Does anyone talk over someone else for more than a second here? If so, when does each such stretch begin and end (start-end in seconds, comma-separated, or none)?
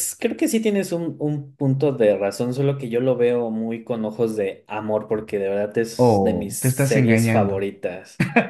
6.0-7.7